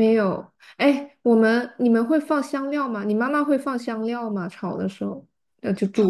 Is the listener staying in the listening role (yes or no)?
no